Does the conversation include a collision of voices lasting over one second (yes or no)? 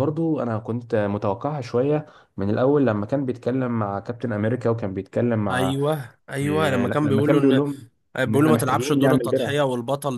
yes